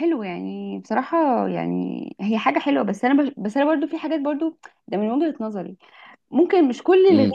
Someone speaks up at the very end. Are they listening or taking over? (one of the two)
listening